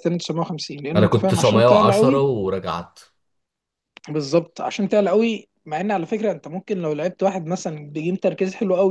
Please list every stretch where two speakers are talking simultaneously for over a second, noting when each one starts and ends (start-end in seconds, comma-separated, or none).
0.9-2.2